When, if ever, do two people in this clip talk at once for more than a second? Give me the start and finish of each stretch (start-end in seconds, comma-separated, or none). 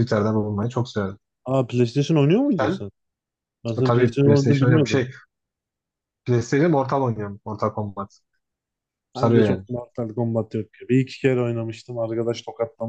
3.8-5.0